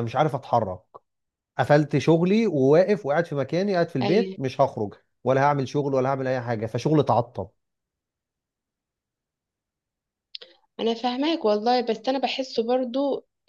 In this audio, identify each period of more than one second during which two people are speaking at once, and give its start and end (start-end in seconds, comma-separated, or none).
none